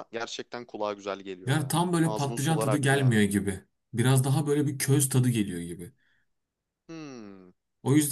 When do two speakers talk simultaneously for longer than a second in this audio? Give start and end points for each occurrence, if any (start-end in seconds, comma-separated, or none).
1.5-3.2